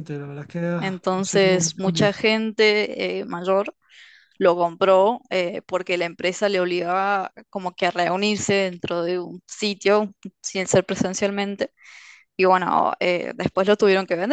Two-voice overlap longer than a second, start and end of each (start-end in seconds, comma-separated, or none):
0.8-2.2